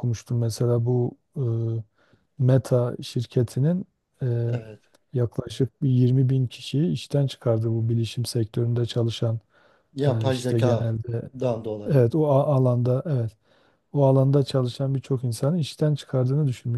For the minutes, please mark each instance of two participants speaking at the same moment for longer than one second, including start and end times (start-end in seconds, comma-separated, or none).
10.0-11.3